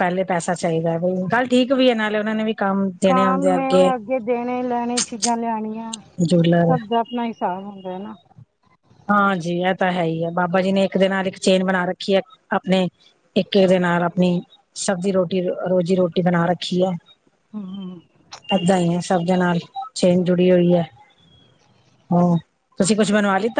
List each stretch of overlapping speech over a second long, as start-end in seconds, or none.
none